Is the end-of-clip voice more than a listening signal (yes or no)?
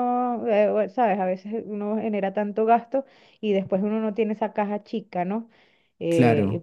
no